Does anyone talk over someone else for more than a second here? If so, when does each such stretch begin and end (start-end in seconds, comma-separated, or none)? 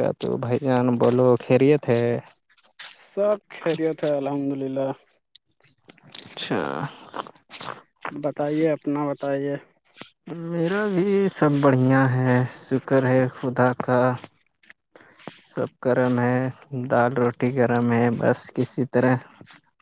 none